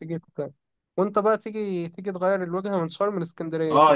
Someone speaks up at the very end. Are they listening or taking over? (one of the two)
taking over